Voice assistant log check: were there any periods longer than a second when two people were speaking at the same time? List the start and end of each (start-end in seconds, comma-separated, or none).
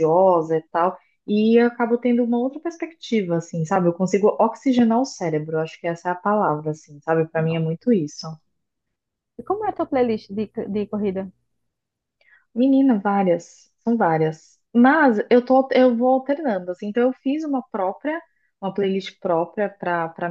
none